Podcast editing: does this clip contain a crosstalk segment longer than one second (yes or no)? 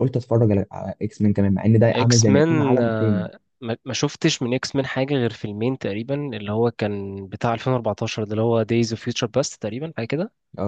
yes